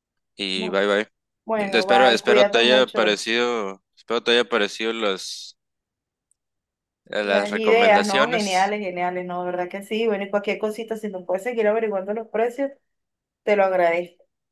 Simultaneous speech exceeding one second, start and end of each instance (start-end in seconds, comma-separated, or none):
1.8-3.2, 7.2-8.8